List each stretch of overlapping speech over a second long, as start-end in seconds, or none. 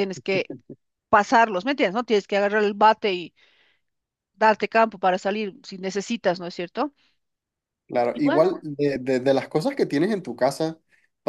none